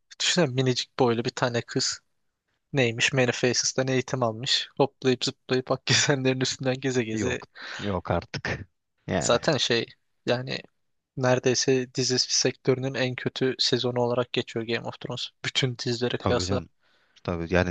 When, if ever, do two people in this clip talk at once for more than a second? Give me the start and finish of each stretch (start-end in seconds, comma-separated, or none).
none